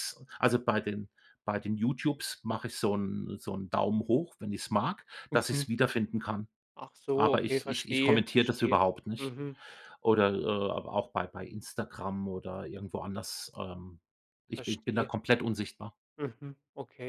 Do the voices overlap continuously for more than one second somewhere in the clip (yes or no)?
yes